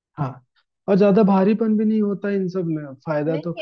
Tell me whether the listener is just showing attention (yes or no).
no